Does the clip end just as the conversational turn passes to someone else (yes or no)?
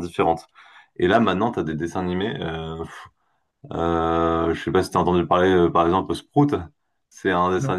no